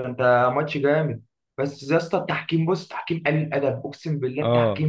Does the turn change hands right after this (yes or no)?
yes